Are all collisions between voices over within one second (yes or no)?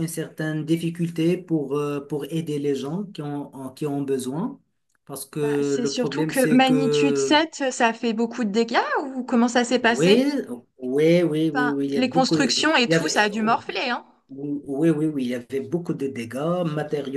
no